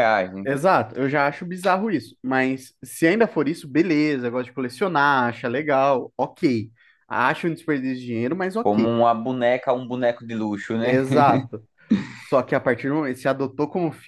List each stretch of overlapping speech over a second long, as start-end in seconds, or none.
none